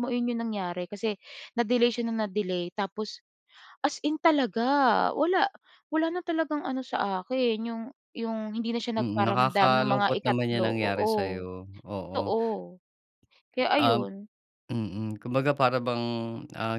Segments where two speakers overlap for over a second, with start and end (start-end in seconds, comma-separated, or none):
9.0-11.4